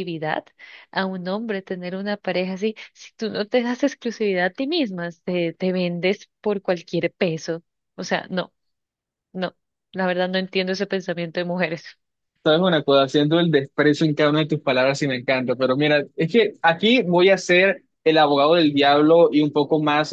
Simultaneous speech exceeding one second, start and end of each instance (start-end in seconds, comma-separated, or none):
none